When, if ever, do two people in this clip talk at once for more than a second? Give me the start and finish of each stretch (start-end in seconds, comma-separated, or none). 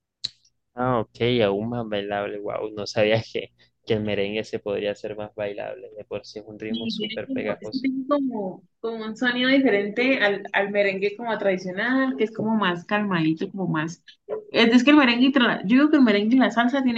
6.7-7.9